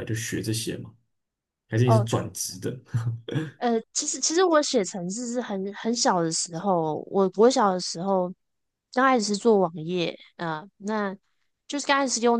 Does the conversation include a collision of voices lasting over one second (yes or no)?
no